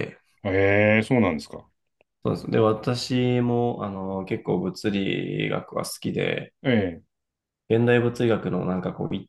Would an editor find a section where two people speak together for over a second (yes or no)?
no